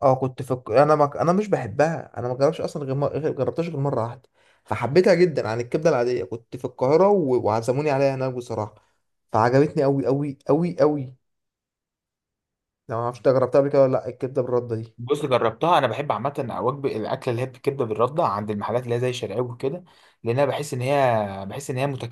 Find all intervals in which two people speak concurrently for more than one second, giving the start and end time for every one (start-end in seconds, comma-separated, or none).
none